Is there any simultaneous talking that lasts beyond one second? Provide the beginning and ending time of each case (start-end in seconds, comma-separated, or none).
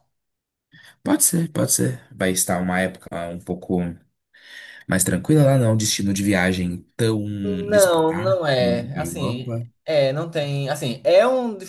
7.7-9.7